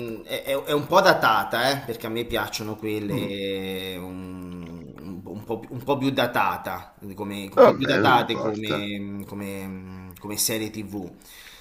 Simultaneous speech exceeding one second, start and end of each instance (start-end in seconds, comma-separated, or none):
7.5-8.8